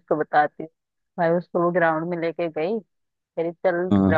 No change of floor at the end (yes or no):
yes